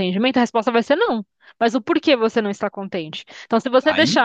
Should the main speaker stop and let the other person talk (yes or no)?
no